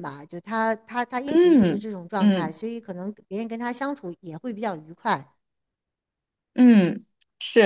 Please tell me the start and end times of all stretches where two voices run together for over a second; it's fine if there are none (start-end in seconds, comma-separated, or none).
1.2-2.6